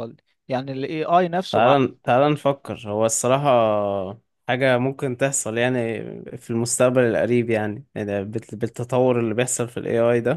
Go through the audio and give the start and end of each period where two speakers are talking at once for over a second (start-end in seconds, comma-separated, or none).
none